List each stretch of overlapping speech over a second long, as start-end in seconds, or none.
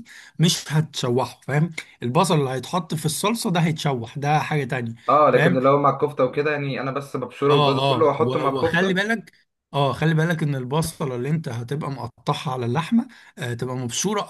7.5-9.0